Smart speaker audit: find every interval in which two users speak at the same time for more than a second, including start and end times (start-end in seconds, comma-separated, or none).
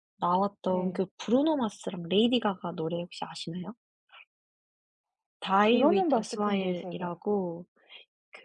5.5-7.2